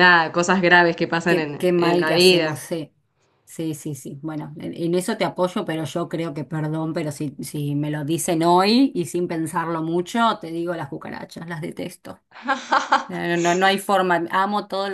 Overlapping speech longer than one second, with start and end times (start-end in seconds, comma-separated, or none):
1.2-2.6